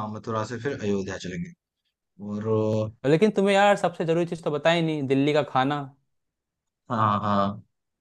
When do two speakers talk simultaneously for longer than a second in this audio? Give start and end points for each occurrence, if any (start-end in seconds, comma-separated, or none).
none